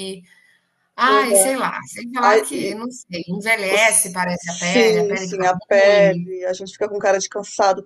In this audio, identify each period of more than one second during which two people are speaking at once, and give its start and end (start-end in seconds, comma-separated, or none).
3.6-6.3